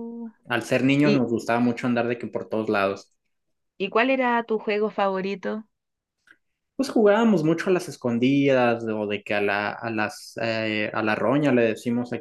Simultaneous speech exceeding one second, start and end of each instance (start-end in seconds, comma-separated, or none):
none